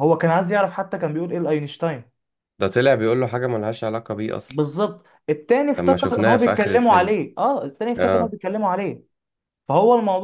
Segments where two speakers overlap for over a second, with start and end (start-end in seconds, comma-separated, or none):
5.8-7.2